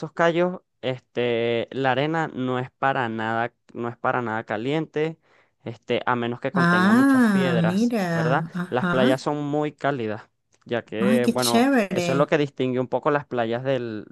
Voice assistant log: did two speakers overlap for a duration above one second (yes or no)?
yes